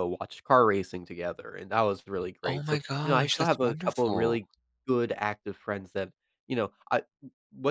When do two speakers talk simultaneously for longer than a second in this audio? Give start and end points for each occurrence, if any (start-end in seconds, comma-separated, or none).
2.4-4.4